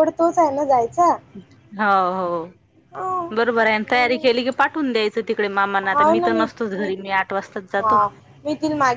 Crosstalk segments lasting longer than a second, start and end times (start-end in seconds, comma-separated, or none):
2.9-4.3